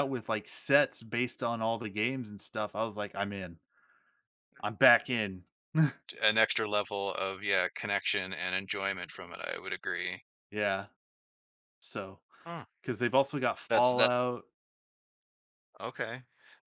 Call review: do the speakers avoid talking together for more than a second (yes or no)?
yes